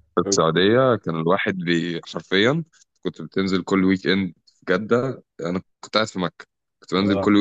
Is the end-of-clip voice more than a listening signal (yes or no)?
no